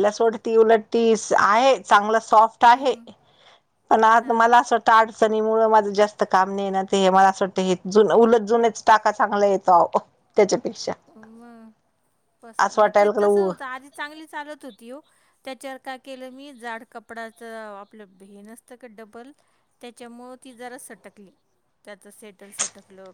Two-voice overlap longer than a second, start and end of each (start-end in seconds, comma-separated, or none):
none